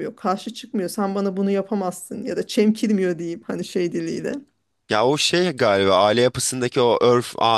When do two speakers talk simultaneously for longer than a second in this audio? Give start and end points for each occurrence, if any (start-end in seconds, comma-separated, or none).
none